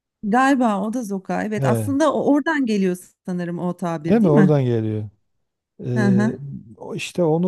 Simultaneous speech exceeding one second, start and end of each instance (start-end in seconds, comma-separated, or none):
none